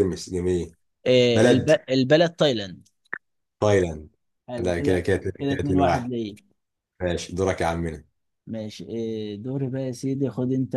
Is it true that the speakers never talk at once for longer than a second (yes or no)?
no